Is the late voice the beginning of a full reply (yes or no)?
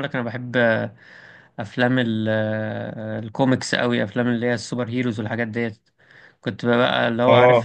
no